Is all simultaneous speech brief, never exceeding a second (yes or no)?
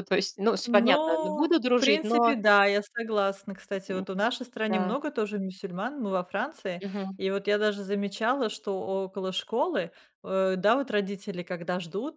no